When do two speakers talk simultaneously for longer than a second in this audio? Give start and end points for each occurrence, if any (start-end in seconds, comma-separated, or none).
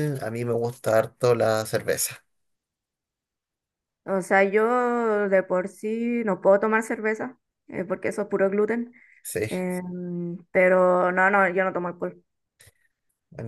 none